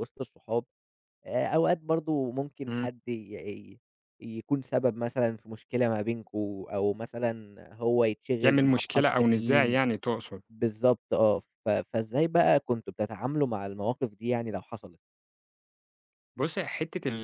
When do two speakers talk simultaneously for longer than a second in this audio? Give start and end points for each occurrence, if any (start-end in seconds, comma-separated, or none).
8.4-9.8